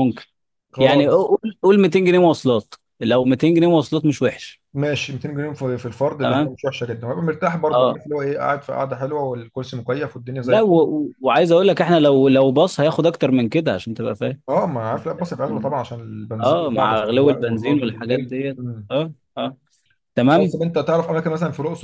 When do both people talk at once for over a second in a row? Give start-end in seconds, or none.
16.4-18.9